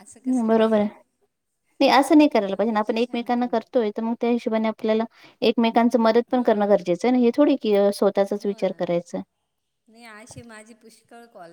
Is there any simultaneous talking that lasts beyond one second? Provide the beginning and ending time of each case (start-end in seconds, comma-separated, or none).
2.3-3.5